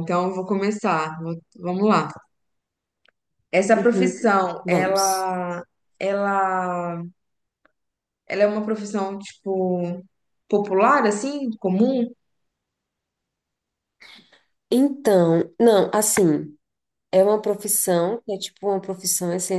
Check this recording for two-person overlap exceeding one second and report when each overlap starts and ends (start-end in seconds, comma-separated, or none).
3.8-5.3